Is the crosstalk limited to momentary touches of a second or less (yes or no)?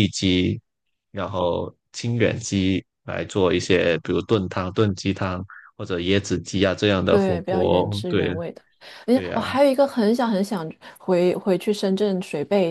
no